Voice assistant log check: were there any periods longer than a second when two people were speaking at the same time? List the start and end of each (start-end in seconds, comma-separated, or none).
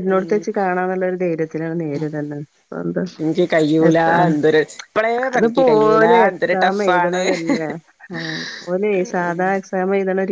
5.3-7.2